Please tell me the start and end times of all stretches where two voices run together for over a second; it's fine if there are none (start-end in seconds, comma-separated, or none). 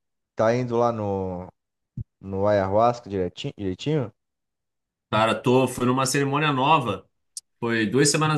none